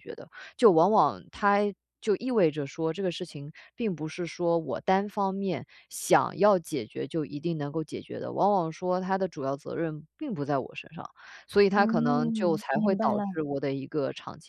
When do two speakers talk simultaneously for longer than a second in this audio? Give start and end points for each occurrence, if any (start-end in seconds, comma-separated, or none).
11.8-13.4